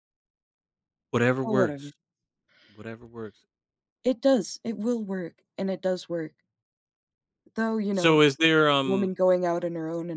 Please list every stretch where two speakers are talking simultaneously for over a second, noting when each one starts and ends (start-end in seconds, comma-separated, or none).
none